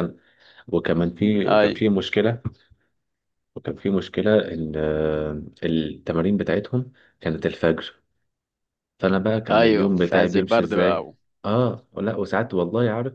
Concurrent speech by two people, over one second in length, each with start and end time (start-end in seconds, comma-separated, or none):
9.5-11.2